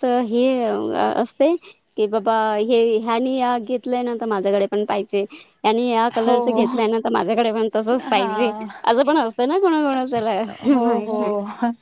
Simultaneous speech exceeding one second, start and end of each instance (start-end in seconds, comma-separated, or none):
none